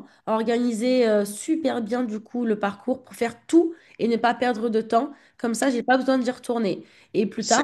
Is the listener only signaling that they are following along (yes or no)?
no